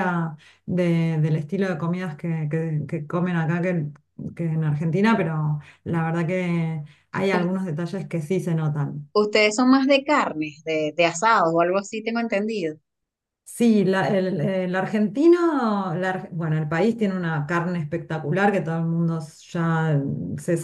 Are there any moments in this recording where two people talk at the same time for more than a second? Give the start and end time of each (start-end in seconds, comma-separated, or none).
none